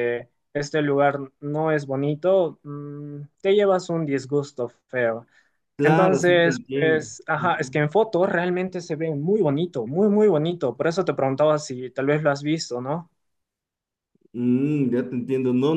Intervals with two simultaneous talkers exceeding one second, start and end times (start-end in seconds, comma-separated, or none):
5.8-7.8